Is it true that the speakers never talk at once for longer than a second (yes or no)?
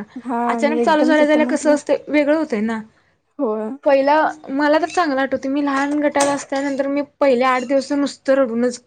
no